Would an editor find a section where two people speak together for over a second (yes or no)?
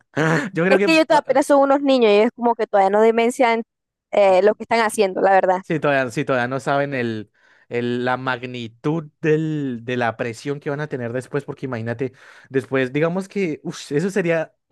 no